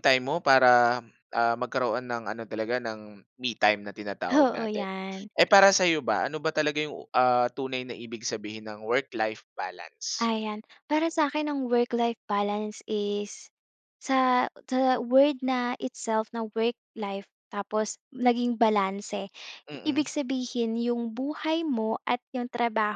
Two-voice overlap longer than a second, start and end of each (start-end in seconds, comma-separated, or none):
none